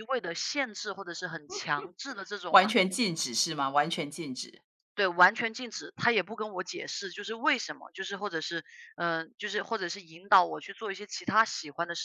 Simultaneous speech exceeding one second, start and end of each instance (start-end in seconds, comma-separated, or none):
none